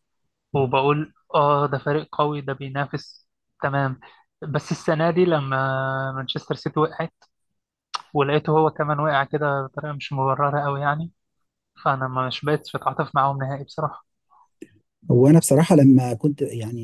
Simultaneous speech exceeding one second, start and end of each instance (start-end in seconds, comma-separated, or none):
none